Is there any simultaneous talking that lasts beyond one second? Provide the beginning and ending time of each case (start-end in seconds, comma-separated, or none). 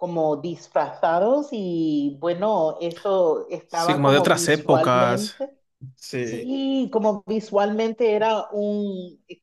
3.7-5.4